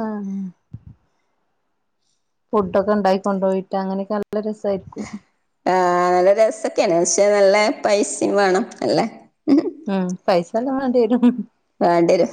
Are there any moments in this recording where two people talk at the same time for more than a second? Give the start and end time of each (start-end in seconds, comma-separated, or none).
none